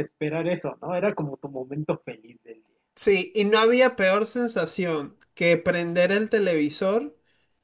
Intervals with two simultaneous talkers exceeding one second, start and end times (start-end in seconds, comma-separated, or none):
none